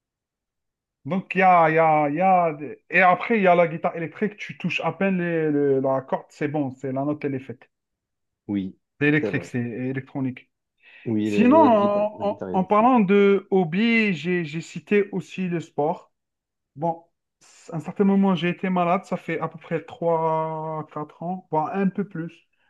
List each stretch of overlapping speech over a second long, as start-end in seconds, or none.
11.2-12.9